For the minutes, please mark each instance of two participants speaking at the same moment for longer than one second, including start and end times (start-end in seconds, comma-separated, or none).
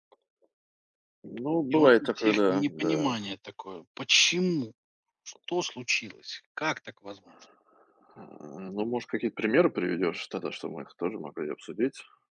1.7-3.2